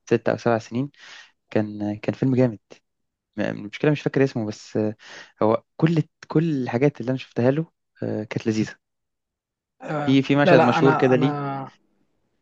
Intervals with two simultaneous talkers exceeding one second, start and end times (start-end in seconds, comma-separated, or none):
10.1-11.4